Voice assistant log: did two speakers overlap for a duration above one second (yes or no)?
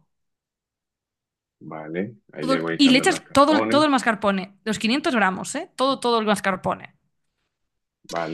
yes